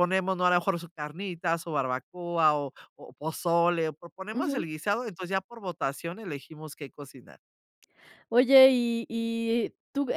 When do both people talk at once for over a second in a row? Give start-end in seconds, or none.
none